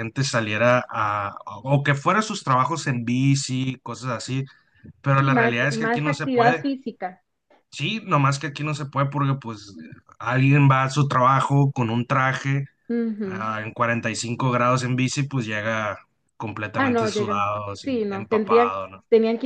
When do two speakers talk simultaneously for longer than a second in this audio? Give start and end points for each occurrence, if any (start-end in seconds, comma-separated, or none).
5.1-6.7, 16.8-18.7